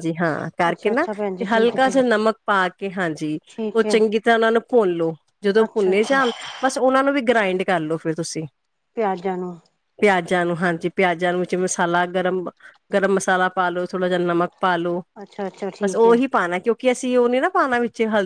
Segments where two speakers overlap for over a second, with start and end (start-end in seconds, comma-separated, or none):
0.7-2.1